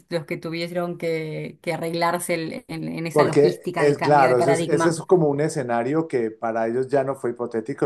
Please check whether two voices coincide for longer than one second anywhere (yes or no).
yes